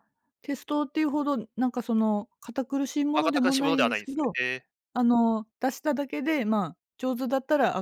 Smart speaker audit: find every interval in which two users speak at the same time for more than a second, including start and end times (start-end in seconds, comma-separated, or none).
3.1-4.4